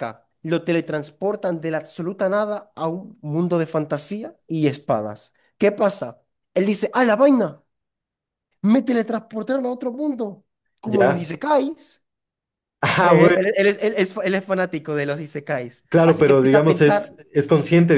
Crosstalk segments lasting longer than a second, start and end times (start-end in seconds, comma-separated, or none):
15.9-17.1